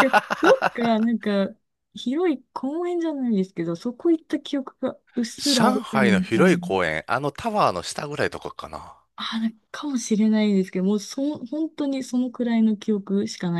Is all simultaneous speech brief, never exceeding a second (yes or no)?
no